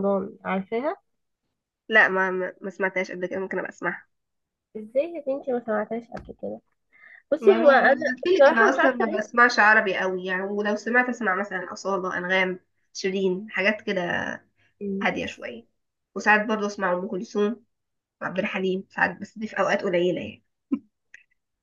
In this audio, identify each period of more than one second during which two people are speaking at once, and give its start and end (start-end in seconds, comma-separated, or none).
7.4-9.2